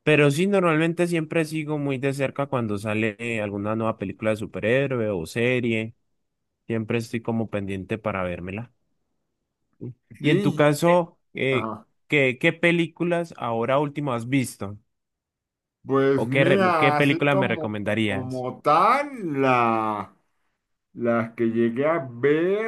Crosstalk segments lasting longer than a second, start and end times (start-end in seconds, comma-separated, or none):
16.1-18.4